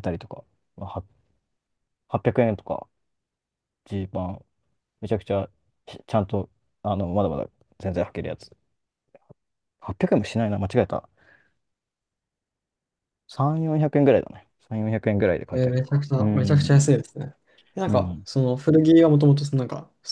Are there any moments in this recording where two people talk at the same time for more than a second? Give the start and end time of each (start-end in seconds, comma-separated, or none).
15.5-16.9